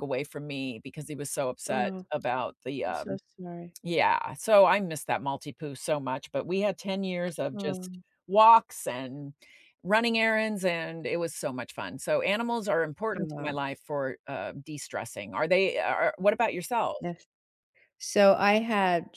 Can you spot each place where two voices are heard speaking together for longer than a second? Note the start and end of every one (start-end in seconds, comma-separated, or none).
none